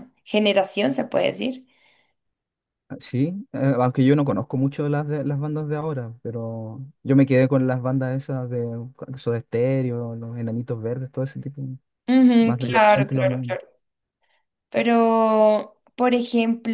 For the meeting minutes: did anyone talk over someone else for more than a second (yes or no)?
yes